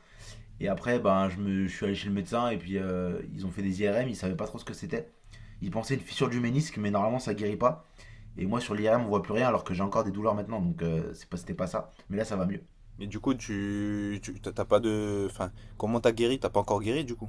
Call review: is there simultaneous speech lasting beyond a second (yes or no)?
no